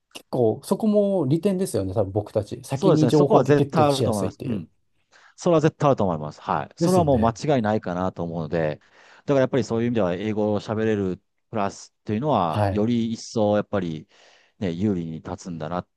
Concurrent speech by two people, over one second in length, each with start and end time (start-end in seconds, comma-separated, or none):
2.7-4.7